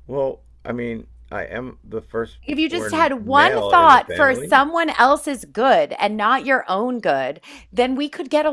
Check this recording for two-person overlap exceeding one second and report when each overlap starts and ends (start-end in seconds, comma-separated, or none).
2.4-4.5